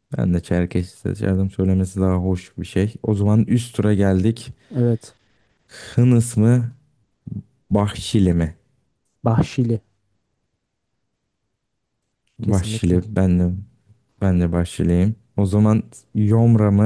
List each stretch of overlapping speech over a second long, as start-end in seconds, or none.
none